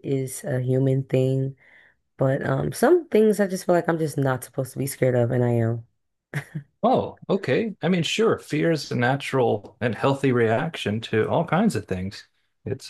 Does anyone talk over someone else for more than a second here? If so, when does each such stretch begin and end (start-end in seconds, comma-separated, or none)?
none